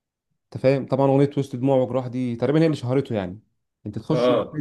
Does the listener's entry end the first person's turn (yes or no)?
no